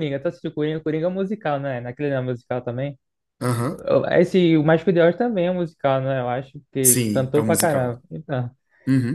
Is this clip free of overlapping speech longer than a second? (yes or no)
no